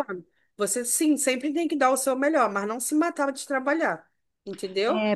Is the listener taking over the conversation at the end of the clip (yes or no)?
yes